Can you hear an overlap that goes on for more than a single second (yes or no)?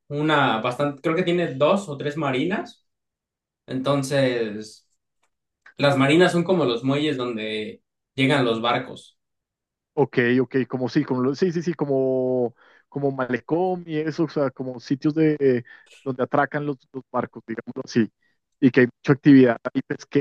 no